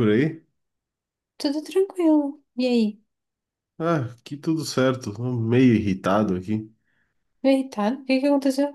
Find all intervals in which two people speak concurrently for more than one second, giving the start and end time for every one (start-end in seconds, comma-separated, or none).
none